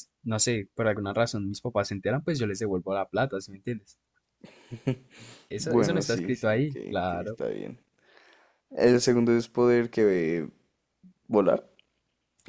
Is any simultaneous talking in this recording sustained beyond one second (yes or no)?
yes